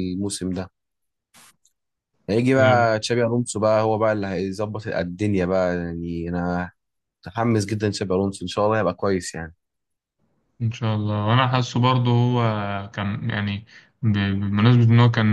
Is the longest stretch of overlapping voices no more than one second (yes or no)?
yes